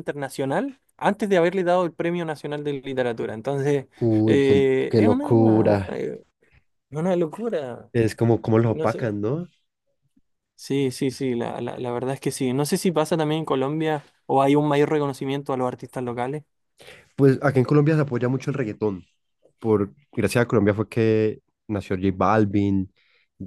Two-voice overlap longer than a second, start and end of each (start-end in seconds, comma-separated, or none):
4.2-6.0